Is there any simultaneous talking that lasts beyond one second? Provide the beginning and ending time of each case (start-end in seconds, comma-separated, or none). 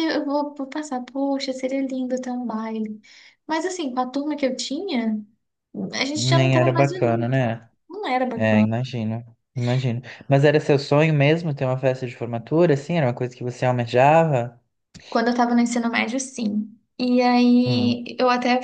6.2-7.4